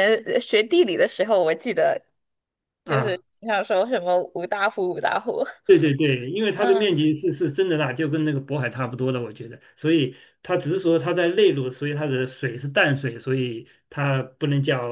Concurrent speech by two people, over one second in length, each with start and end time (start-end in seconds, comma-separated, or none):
none